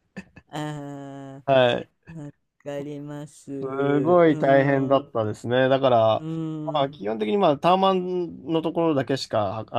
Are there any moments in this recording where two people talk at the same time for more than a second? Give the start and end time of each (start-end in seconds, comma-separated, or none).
3.6-5.1